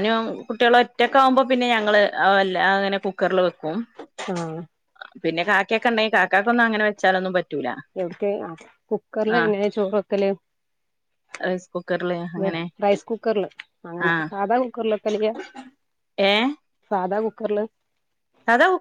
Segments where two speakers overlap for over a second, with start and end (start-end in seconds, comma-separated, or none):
none